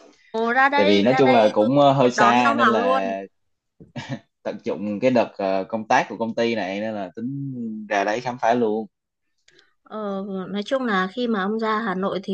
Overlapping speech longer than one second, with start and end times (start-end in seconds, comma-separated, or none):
0.8-3.0